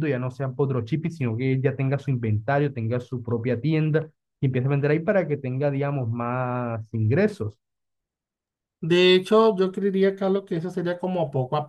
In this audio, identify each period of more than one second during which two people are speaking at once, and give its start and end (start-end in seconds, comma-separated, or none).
none